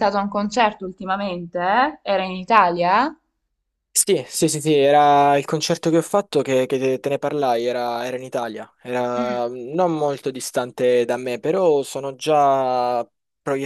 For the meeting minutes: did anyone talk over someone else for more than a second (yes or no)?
no